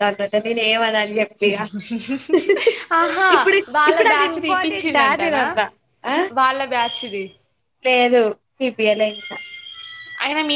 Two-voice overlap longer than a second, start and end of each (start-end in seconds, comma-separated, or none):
3.8-5.4